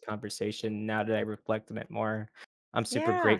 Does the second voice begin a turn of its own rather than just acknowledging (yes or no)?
no